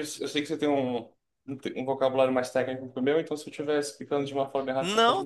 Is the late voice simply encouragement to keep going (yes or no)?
no